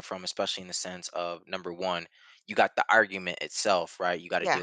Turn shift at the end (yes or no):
no